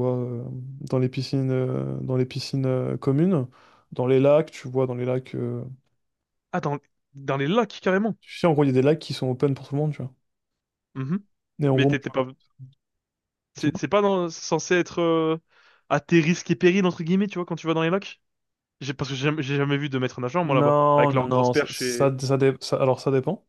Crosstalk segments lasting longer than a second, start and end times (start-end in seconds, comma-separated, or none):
20.4-22.1